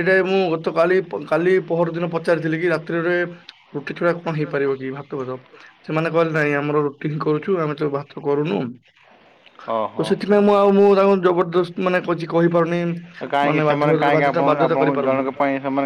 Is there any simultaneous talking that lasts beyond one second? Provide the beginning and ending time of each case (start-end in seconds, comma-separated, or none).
13.5-15.2